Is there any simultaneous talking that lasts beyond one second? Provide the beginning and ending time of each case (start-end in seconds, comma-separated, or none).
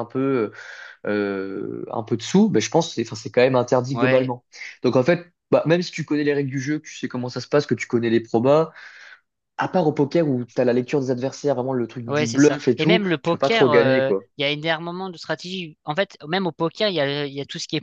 12.1-14.3